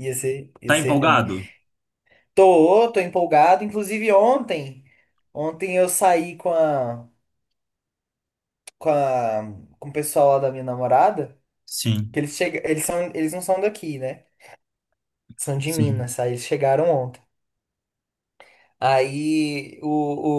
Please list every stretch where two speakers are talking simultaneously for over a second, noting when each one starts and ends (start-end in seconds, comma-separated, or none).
none